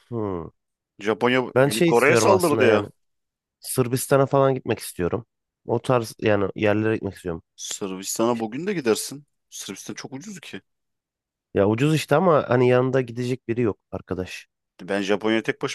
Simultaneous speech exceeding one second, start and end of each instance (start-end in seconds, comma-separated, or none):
1.5-2.9